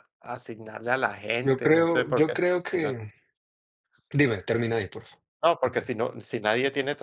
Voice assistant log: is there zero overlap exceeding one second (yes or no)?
no